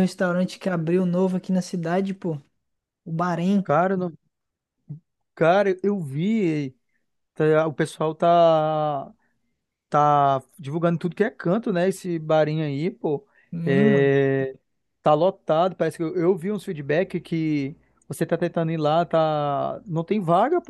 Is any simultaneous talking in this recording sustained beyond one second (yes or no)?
no